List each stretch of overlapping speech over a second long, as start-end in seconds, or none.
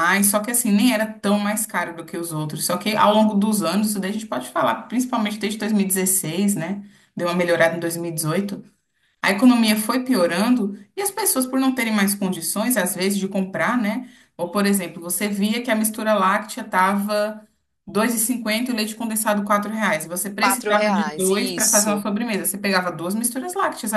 20.4-22.0